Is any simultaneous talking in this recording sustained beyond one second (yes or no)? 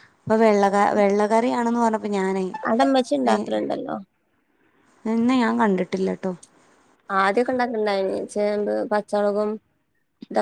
no